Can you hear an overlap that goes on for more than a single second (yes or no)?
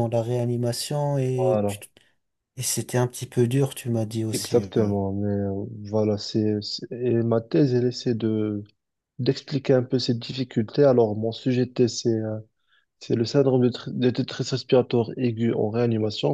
no